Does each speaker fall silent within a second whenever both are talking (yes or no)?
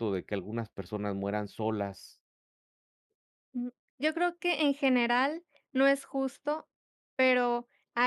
yes